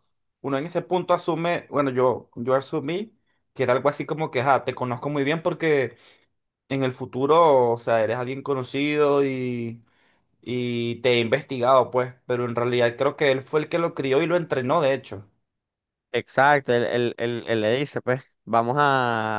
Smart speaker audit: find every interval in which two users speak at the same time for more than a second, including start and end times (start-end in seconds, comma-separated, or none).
none